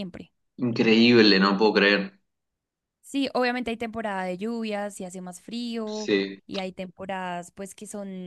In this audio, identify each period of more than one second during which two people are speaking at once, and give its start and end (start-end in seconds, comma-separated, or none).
none